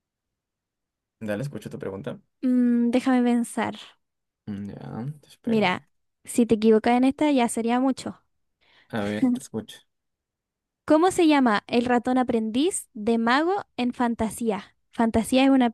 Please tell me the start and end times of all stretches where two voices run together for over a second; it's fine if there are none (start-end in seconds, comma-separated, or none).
none